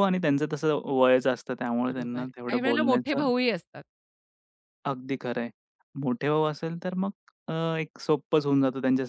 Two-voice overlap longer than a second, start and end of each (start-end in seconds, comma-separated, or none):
1.9-3.2